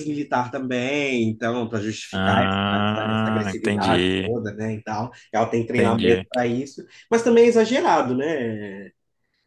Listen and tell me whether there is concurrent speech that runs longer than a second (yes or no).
yes